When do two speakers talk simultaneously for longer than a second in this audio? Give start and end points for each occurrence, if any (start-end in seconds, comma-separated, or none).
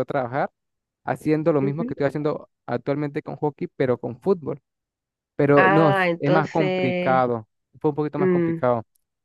5.5-7.2